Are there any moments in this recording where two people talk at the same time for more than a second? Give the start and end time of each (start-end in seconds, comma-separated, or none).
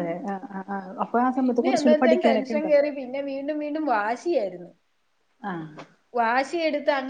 1.4-2.8